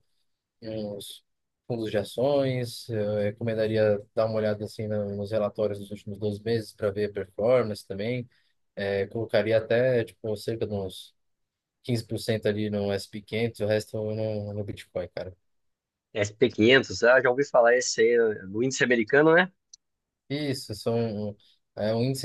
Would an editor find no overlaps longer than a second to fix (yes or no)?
yes